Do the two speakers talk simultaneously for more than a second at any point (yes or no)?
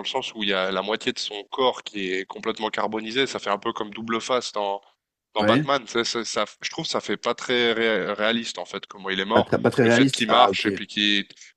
yes